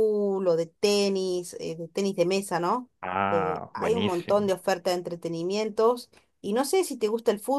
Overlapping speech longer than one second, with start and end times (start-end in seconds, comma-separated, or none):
3.3-4.5